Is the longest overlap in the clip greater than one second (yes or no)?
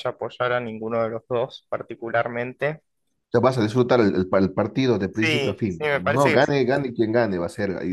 yes